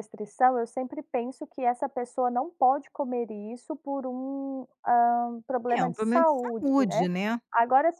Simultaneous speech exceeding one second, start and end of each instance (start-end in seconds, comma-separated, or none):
5.7-7.1